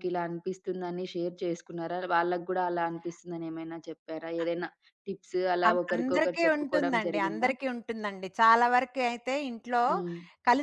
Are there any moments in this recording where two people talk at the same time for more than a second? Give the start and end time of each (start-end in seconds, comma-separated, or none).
5.7-7.5